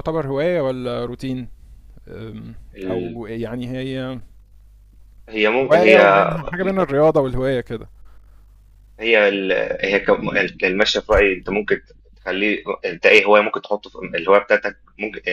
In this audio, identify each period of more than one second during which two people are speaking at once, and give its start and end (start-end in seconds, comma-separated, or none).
none